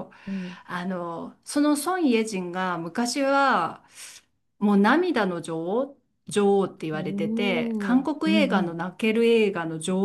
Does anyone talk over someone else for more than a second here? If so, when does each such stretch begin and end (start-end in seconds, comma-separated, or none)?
6.9-8.8